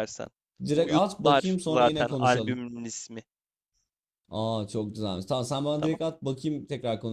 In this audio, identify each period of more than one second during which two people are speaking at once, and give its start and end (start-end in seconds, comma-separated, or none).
0.7-2.6